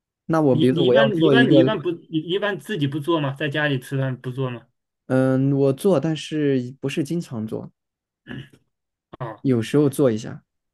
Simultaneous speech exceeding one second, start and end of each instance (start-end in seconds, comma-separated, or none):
0.5-1.8